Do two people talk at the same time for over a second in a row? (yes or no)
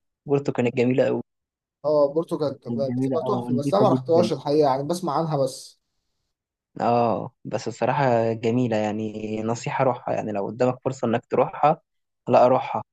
yes